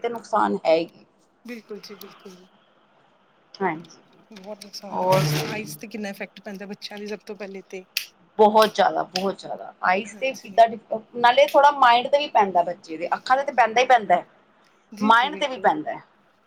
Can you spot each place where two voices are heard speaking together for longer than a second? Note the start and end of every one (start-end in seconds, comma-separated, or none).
none